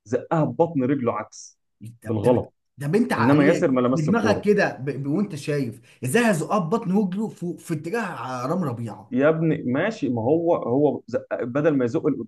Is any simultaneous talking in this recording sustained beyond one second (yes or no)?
yes